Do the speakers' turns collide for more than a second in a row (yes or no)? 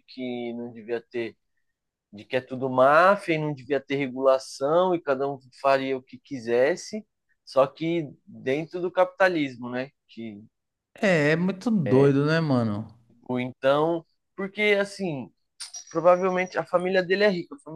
no